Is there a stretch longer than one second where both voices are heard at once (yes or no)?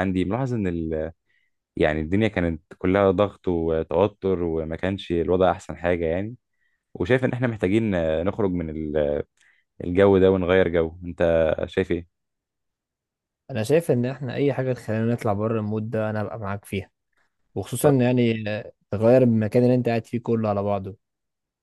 no